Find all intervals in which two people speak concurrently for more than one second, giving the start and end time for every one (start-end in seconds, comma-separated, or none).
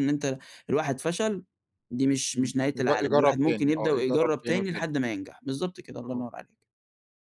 2.3-4.9